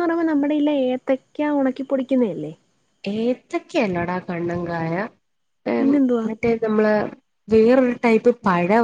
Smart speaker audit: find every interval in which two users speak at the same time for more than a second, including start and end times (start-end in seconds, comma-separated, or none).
none